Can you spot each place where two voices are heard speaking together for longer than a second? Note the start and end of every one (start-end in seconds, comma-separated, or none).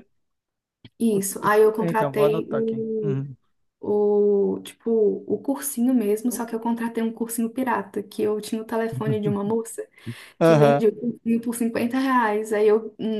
1.1-3.2